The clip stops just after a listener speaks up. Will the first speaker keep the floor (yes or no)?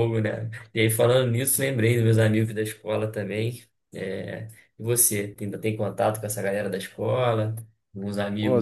no